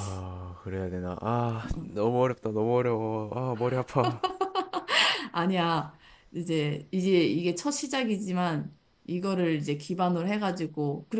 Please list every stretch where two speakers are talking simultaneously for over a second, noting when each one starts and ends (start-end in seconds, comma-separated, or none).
none